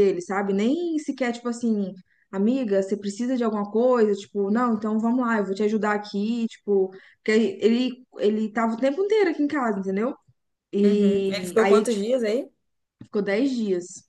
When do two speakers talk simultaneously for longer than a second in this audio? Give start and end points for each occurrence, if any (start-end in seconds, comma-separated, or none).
10.8-12.1